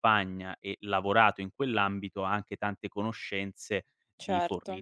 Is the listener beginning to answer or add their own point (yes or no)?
no